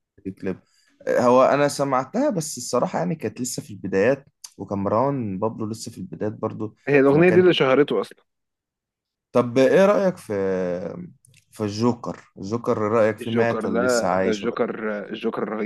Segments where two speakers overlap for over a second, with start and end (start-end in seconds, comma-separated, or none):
13.2-14.6